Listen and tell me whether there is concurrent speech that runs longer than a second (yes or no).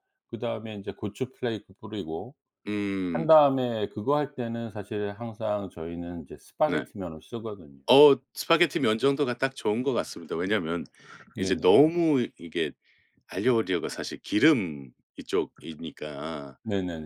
no